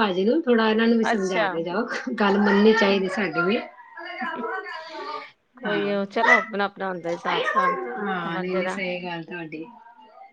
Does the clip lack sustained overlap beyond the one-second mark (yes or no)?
yes